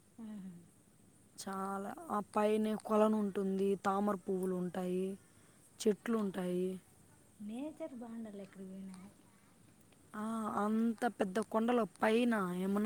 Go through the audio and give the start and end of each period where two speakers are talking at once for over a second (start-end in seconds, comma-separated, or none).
none